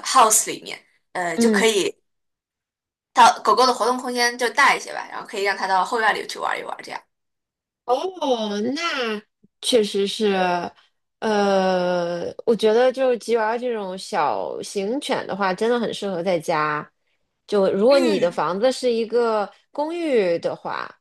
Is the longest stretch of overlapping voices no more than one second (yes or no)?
yes